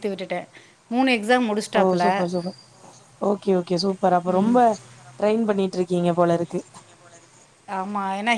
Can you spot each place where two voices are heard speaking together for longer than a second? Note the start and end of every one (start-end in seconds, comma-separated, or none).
none